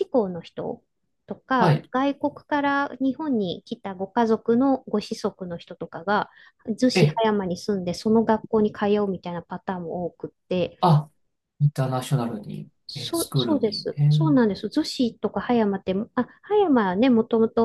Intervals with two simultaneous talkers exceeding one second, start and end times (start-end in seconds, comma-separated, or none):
12.9-14.4